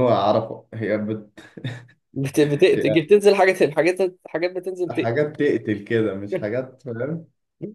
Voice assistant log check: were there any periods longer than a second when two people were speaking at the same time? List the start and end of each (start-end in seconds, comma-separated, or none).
none